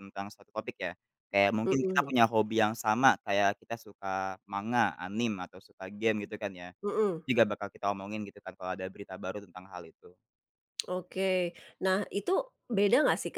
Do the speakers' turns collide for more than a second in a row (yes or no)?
no